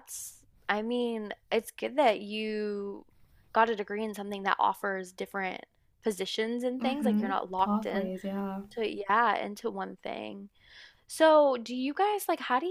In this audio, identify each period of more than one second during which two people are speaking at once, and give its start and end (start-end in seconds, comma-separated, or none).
6.8-8.1